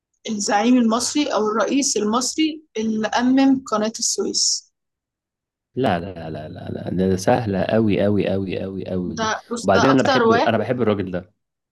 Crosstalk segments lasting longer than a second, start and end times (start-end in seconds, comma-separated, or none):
9.2-10.6